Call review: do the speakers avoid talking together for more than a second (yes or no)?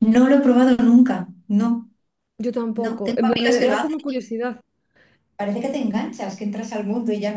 no